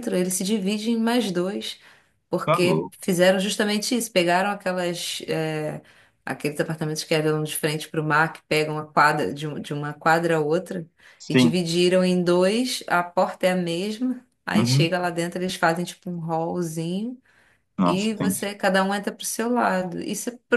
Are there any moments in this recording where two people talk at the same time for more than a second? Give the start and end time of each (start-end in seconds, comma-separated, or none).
none